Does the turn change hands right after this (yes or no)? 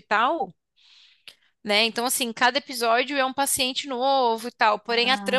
no